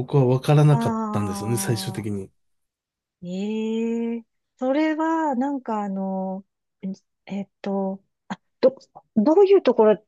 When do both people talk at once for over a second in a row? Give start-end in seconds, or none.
none